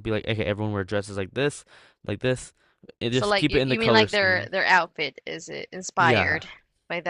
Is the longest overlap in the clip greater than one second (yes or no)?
yes